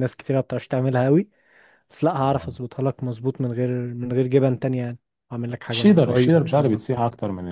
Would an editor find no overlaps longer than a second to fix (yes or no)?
no